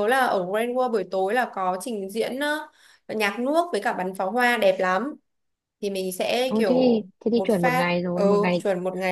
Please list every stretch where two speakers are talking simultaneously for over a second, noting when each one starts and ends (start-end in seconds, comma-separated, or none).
6.5-8.6